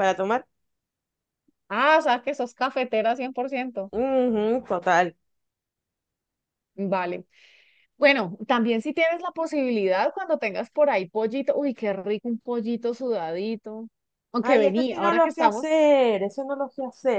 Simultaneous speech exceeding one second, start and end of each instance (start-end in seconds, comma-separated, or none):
14.4-15.7